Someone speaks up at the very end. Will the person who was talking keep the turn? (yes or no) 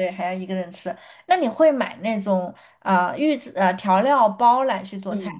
no